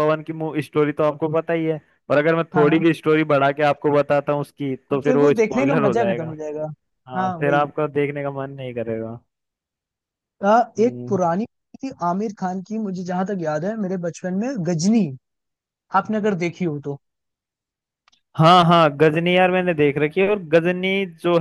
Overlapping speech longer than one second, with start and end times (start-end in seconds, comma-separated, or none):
4.9-6.3